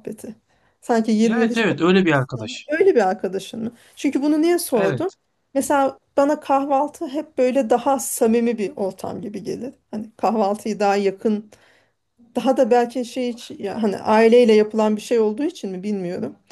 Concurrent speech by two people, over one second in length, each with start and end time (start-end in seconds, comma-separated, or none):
1.2-2.7